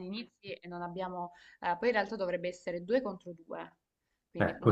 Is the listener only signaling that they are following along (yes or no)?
yes